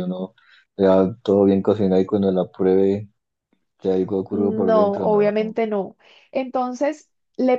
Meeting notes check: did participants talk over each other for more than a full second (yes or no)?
yes